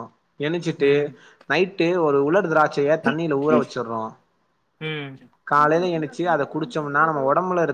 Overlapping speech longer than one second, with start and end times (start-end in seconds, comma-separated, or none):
5.6-7.2